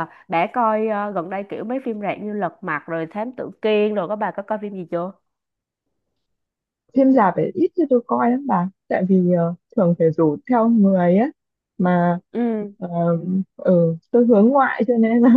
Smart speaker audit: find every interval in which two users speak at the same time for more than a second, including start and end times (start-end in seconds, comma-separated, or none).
none